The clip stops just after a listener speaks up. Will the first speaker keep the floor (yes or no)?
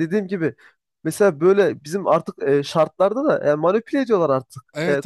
no